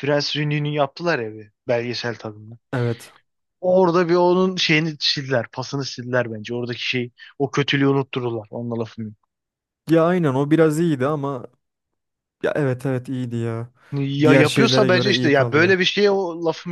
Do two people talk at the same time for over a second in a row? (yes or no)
yes